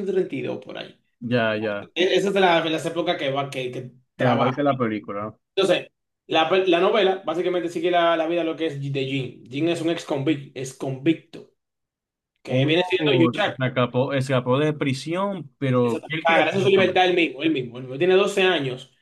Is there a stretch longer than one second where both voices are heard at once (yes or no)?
yes